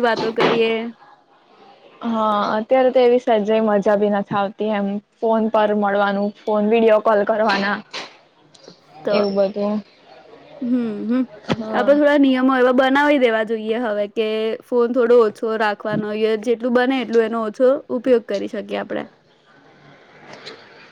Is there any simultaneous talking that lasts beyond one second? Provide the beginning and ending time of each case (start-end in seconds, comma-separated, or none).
none